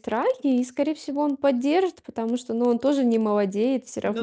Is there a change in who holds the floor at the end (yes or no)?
yes